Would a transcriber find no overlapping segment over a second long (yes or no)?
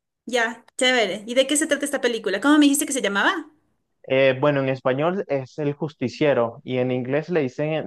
yes